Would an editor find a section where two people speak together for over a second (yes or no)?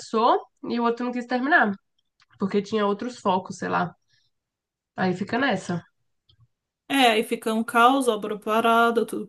no